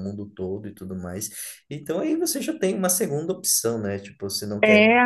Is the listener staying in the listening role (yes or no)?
yes